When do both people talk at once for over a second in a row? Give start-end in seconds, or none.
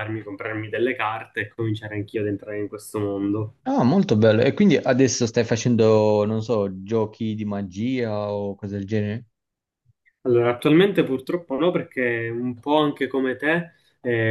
none